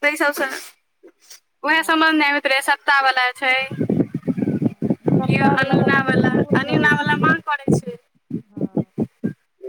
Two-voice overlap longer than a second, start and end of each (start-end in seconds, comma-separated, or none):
5.0-7.2